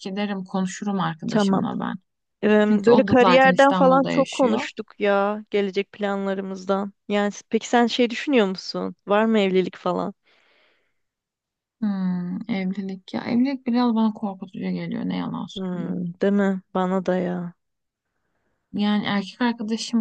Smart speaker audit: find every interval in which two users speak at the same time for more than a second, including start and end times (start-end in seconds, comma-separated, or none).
2.6-4.7